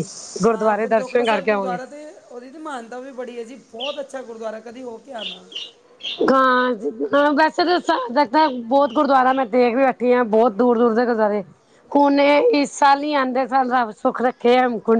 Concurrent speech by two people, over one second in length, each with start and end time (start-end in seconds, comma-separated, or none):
0.5-1.8